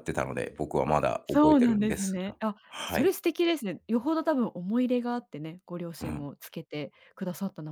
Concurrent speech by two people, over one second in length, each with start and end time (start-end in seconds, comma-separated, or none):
1.3-3.1